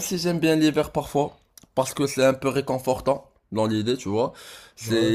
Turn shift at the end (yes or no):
no